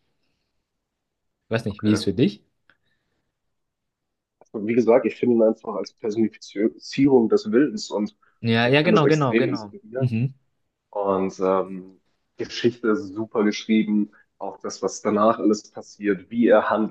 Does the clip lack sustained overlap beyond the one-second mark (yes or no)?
no